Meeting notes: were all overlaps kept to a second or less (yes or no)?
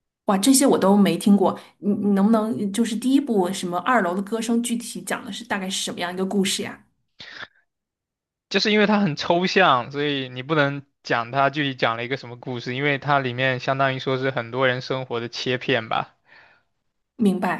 yes